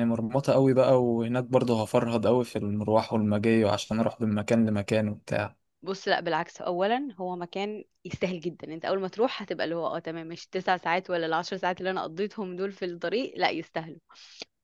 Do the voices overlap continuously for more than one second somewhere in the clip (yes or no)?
no